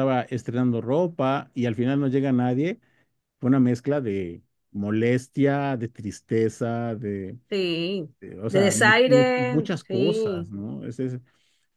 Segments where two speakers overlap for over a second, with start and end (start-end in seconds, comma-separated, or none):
8.5-10.5